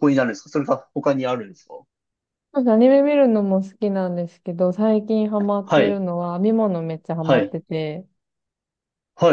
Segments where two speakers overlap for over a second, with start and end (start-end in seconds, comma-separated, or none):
none